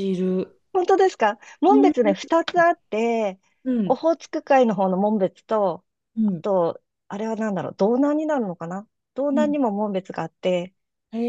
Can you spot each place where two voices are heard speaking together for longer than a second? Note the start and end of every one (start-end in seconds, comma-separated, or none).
none